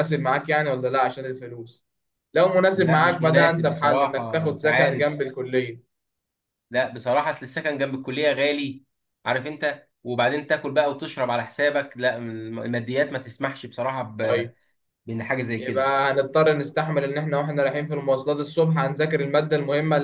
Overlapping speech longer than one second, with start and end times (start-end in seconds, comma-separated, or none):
2.7-5.0